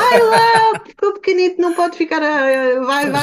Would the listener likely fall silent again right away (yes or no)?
no